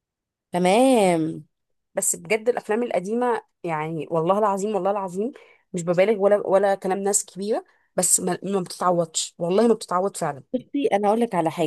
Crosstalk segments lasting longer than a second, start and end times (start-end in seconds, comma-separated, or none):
none